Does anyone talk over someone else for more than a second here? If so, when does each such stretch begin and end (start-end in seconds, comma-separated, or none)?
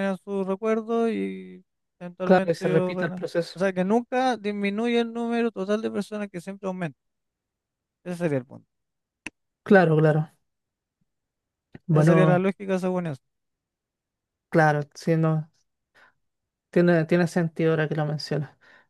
2.2-3.6